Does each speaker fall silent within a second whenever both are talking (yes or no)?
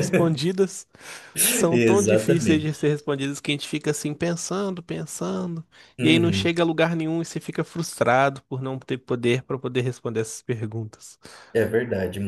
no